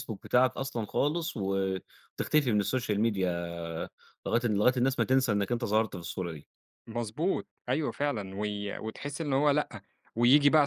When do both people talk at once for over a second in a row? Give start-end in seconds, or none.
none